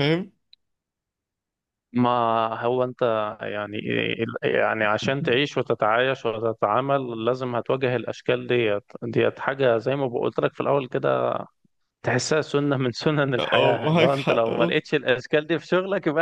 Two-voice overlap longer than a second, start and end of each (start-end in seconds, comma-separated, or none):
13.4-14.8